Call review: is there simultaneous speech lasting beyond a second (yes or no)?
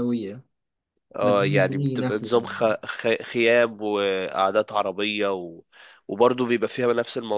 yes